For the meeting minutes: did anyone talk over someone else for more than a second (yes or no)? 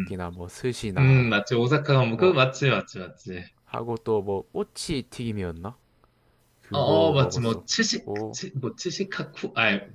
yes